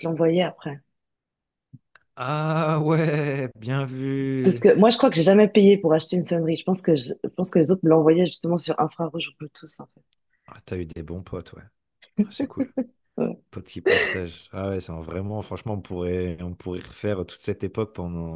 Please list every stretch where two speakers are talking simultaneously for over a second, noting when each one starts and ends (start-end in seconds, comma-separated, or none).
none